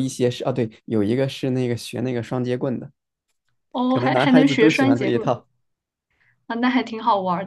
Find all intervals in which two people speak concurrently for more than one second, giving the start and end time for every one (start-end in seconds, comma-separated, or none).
3.9-5.4